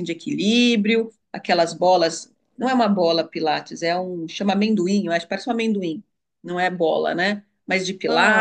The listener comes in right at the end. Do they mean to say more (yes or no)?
no